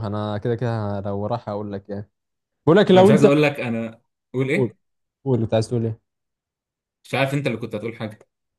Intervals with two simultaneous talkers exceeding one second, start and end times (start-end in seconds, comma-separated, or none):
none